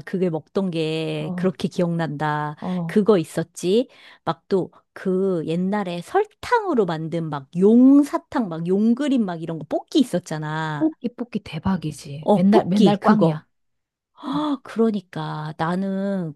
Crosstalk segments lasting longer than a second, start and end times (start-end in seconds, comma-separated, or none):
12.2-13.4